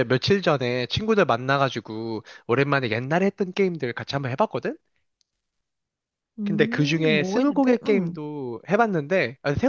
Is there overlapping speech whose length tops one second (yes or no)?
yes